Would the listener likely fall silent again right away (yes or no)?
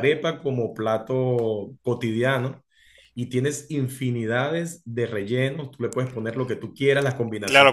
no